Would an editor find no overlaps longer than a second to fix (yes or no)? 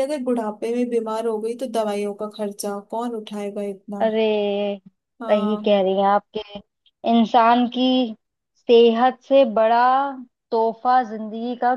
yes